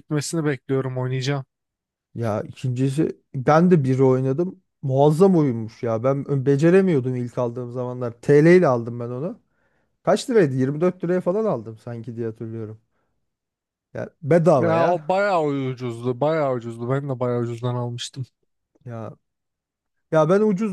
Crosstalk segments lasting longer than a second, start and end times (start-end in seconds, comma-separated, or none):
none